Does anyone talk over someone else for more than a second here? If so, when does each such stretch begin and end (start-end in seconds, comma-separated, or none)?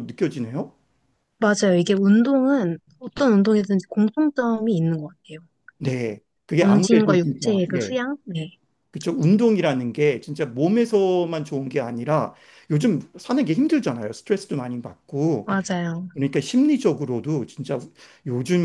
6.6-8.0